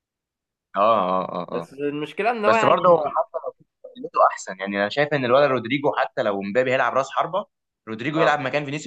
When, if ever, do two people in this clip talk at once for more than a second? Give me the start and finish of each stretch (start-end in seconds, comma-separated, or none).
none